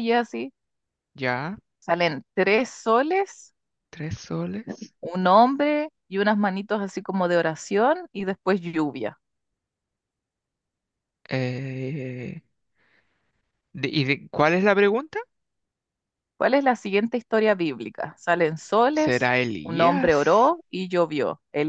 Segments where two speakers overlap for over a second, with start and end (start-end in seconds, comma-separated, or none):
19.0-20.5